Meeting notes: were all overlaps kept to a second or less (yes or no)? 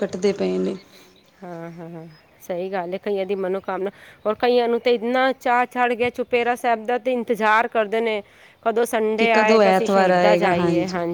no